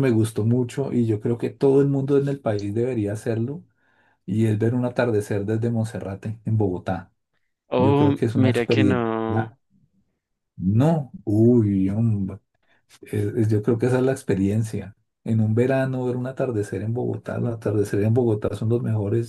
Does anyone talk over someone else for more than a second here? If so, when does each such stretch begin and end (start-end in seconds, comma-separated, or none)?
7.8-9.0